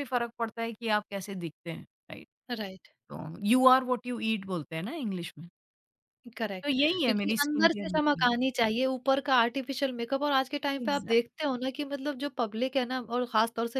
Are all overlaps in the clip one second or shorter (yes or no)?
no